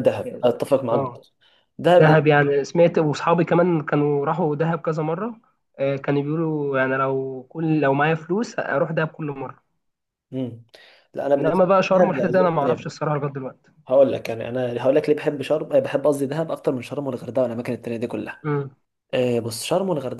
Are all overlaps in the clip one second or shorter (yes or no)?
no